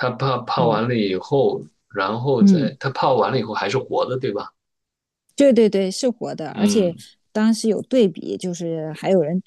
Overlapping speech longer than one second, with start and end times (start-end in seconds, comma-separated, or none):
none